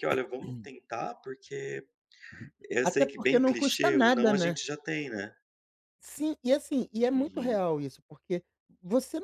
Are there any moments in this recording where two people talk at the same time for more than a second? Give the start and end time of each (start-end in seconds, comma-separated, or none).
2.8-4.5